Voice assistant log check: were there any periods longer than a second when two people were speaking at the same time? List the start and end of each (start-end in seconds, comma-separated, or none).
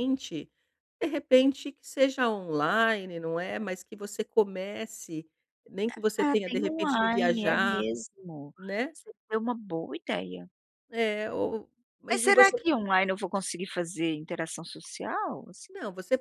6.2-7.9